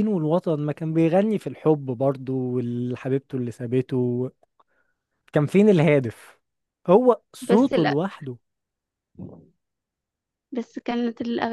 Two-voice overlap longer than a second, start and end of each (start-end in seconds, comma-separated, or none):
none